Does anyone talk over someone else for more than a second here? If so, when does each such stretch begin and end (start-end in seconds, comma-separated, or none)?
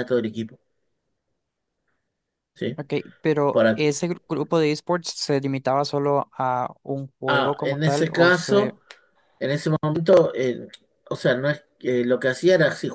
7.3-8.7